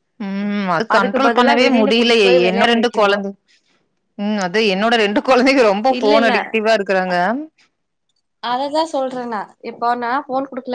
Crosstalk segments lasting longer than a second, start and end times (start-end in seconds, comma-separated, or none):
0.9-3.1